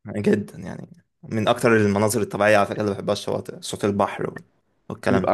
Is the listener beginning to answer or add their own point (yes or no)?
yes